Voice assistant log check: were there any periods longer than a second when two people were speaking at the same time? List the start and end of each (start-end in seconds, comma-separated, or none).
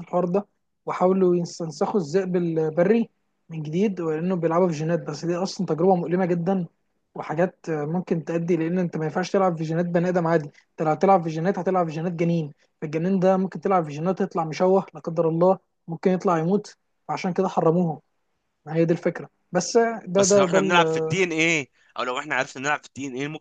none